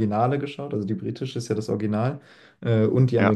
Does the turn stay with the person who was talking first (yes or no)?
yes